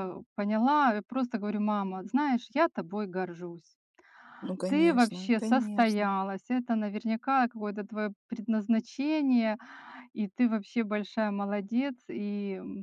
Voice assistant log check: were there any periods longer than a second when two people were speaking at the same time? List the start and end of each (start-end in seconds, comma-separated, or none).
4.7-6.2